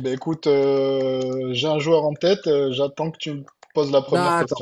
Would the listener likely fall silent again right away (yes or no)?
no